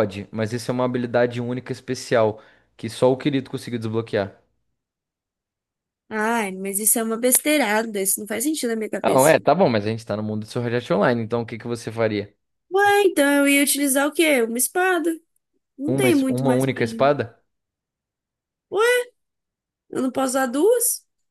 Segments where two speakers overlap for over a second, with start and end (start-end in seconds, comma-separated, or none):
15.9-17.1